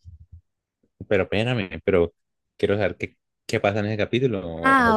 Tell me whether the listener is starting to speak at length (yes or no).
yes